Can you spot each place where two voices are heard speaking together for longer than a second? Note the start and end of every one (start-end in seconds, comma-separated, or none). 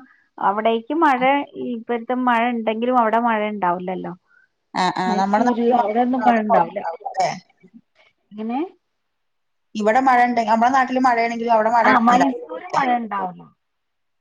5.1-6.8